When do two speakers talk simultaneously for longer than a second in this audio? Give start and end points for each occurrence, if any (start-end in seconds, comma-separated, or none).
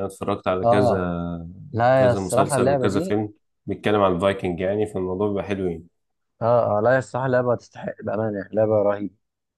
1.9-3.2